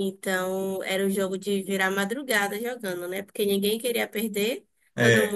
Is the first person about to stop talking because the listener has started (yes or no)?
no